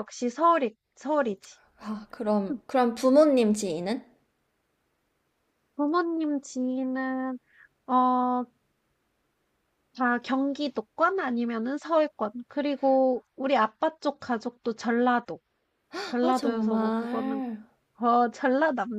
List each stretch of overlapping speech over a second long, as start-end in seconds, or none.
16.2-17.4